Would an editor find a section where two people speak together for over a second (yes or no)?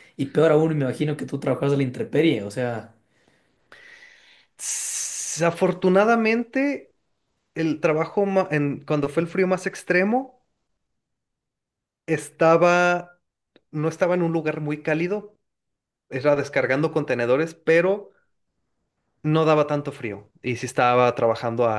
no